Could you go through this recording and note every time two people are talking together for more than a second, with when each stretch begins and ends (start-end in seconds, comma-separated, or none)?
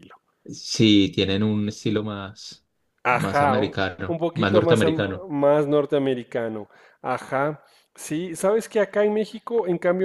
3.1-5.3